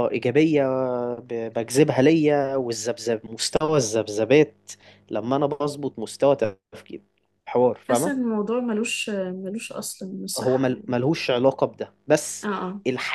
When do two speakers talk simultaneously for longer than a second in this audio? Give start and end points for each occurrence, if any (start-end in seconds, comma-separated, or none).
none